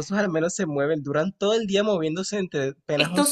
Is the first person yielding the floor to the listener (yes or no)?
no